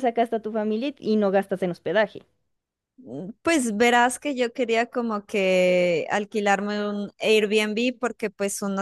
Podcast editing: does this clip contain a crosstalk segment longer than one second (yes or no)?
no